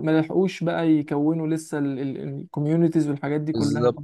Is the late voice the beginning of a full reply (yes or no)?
yes